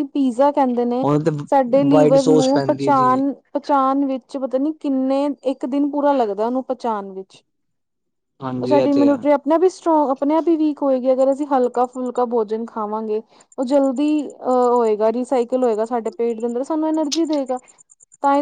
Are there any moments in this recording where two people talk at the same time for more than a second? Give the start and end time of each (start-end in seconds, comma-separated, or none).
1.9-3.2